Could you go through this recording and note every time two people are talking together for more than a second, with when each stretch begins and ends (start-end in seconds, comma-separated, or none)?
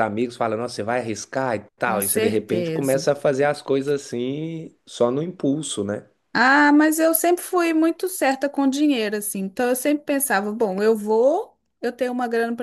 1.8-3.1